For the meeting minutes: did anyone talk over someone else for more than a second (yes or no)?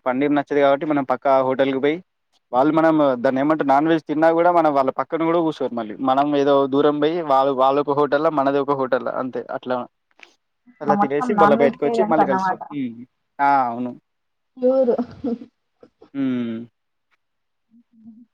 yes